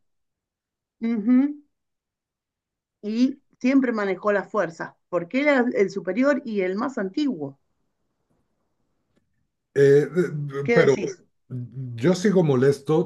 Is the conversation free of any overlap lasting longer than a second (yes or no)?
yes